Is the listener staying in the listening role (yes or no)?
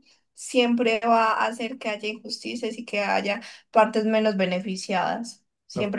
yes